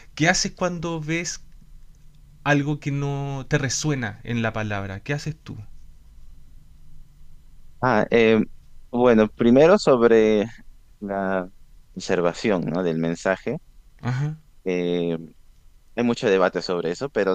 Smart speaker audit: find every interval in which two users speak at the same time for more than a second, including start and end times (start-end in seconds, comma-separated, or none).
none